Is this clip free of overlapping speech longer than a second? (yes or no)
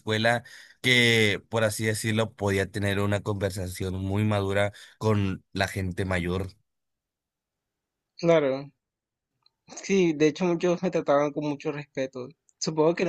yes